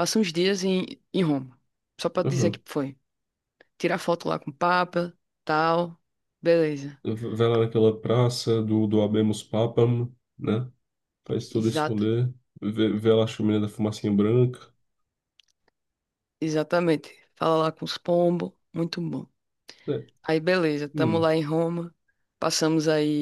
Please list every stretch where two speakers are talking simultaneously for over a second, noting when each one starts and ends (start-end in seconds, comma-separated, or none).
none